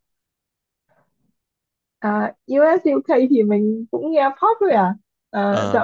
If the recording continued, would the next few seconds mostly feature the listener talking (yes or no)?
no